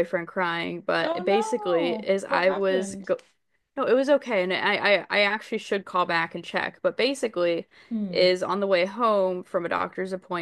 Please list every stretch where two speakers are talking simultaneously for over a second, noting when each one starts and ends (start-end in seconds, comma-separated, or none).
1.0-3.1